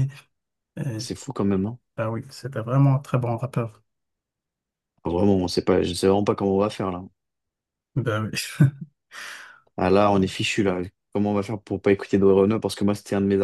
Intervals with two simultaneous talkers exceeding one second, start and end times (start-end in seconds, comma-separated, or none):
none